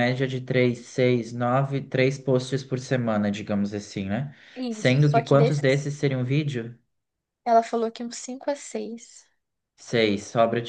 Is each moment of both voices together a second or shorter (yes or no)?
no